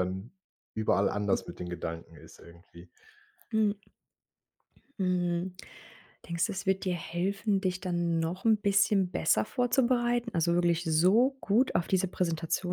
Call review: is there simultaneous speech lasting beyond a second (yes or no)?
no